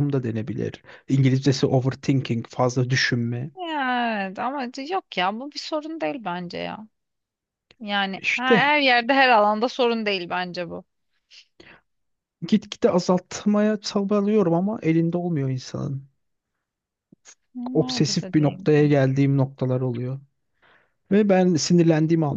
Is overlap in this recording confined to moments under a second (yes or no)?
no